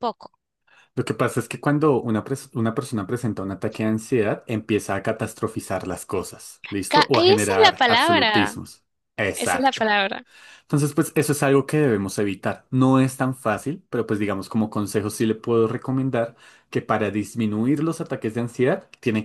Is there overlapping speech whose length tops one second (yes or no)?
yes